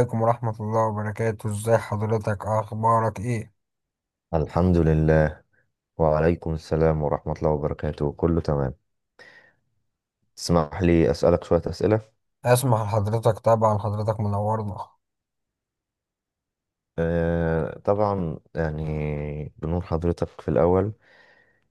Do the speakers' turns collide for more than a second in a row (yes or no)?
no